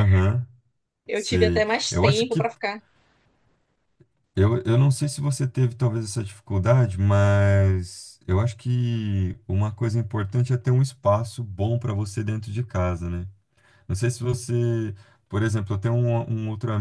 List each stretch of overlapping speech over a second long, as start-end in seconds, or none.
1.1-2.5